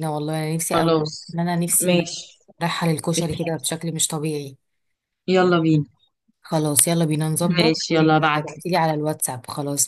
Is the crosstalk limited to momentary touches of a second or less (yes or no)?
no